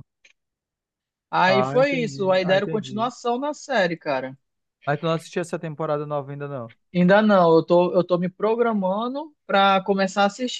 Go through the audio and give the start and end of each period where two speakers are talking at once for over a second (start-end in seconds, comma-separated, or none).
1.5-3.1